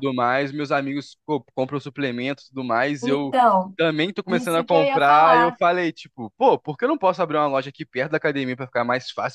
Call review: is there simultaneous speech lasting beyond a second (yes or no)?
yes